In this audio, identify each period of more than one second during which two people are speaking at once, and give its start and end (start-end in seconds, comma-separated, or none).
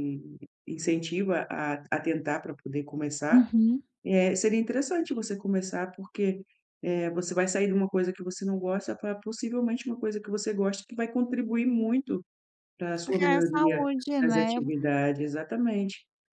13.1-14.5